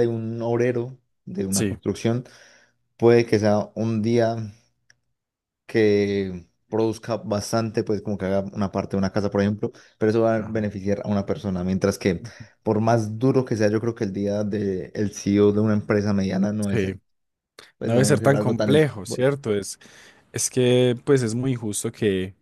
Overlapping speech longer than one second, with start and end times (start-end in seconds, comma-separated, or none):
17.8-19.3